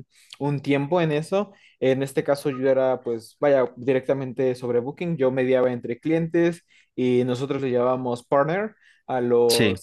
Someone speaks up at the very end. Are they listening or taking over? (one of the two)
listening